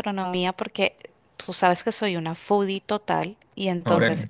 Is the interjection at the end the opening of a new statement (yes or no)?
no